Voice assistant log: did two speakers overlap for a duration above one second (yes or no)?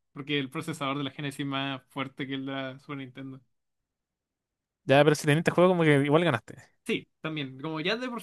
no